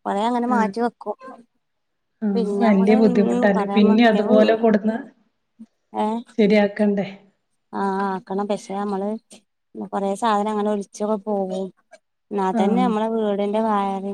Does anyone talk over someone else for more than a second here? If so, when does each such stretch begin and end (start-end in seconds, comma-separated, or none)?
2.4-4.6